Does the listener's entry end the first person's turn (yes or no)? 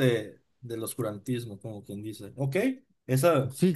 yes